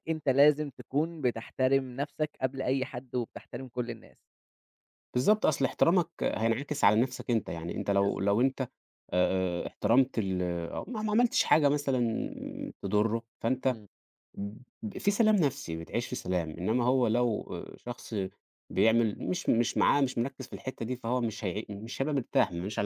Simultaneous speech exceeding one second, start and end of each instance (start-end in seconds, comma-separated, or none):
none